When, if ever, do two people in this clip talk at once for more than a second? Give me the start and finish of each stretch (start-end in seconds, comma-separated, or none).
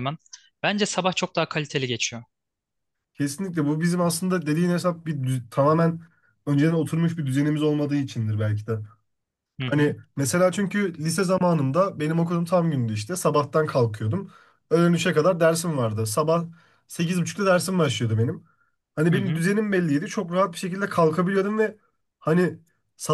none